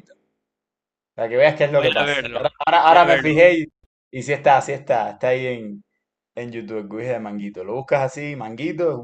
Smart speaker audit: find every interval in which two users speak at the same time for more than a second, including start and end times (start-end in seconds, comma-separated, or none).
1.7-3.4